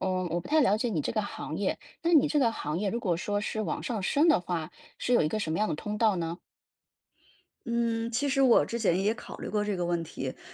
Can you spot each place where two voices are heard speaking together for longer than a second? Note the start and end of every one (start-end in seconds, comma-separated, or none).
none